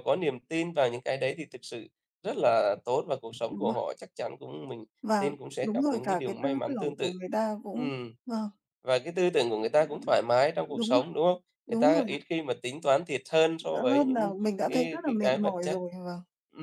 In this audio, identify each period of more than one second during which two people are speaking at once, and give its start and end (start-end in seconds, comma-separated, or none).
5.0-7.1, 13.6-15.8